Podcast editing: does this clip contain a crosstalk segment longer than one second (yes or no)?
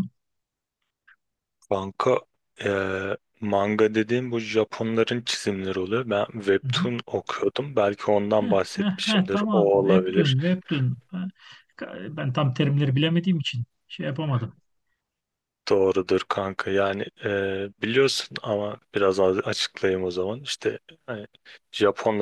yes